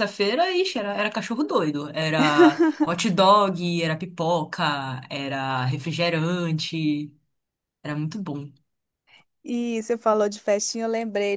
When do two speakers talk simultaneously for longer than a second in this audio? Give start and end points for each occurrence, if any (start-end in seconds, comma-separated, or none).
none